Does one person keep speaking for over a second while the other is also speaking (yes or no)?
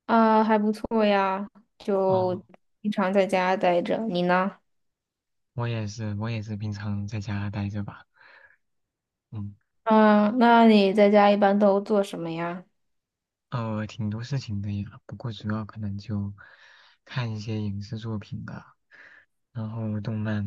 no